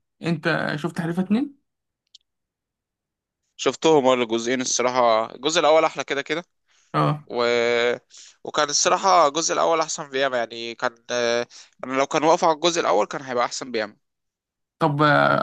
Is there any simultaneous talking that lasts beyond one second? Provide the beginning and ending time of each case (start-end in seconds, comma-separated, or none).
none